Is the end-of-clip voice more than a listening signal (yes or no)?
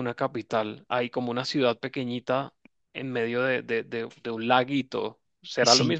yes